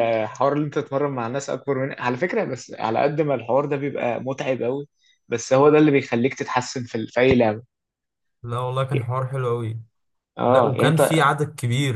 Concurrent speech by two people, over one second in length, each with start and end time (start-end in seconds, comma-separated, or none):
none